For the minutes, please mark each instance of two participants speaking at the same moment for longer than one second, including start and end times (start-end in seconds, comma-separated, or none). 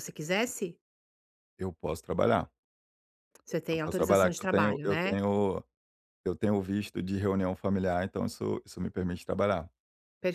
3.7-5.2